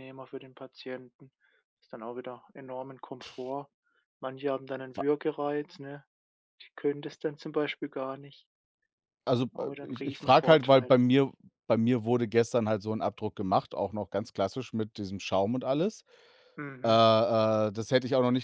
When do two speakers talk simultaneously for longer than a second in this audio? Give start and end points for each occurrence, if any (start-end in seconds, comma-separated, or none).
9.5-11.0